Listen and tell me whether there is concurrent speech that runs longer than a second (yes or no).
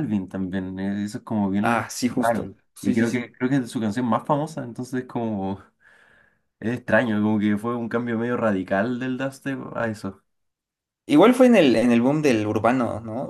yes